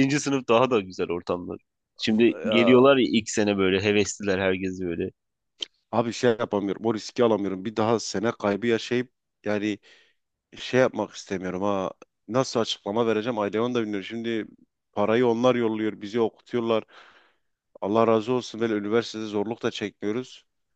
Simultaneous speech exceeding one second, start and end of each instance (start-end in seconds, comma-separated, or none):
none